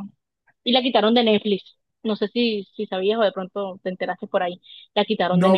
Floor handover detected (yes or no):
yes